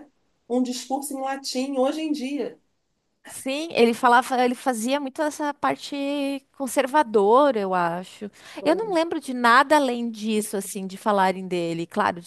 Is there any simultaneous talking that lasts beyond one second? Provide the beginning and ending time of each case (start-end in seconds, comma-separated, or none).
none